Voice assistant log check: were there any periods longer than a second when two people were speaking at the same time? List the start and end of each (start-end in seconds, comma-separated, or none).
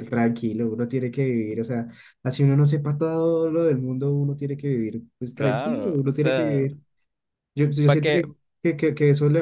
5.3-6.7